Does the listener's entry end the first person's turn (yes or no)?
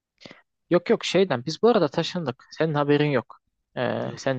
no